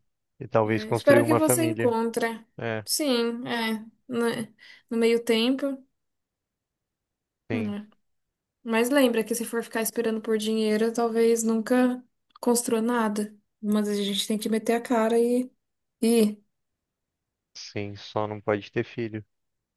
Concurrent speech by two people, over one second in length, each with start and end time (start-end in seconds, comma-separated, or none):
0.7-1.9